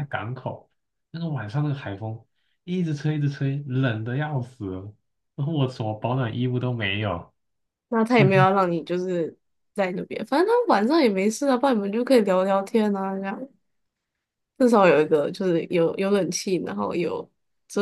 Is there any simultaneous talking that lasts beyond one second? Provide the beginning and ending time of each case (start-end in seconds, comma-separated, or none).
none